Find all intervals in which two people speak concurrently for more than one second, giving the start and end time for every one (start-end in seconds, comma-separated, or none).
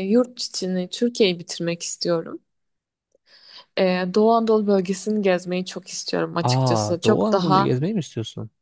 6.4-7.8